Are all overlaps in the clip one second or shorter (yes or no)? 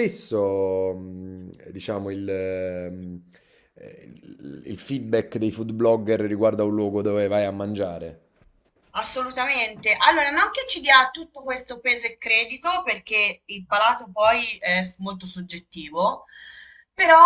yes